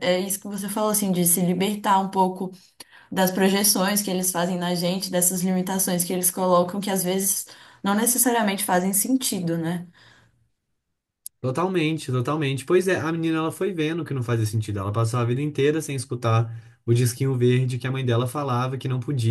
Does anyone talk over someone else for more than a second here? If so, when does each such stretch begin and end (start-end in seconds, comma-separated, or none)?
none